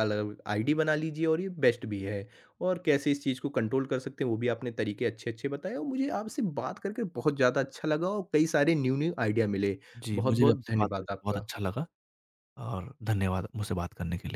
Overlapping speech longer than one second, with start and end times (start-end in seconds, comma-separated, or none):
10.1-11.5